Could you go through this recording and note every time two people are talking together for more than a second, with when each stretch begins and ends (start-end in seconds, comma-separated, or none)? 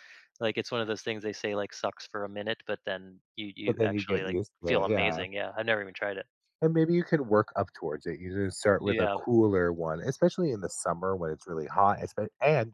3.6-5.2